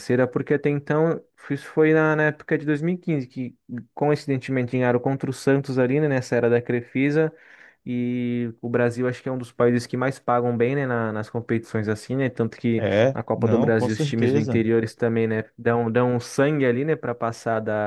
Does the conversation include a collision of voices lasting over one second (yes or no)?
yes